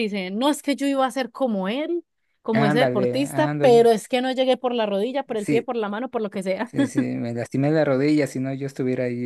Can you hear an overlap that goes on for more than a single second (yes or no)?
yes